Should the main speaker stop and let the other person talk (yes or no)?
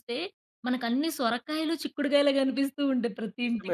yes